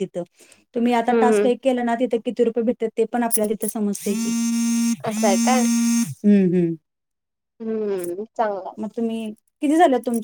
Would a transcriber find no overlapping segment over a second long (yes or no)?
yes